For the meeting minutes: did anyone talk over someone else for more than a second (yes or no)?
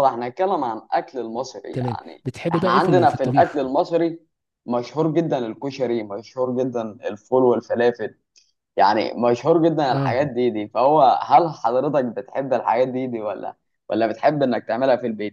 yes